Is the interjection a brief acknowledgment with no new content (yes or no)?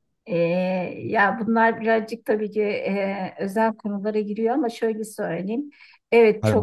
no